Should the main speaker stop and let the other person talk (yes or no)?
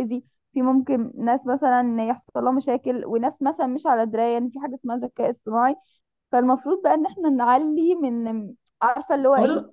no